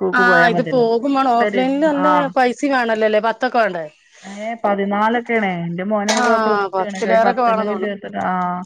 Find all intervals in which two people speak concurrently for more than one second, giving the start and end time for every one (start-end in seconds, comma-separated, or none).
6.2-8.1